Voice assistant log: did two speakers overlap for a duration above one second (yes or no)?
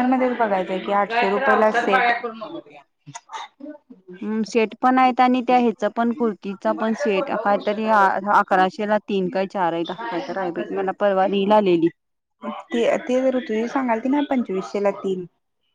no